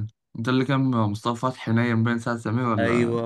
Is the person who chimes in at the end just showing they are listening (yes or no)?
no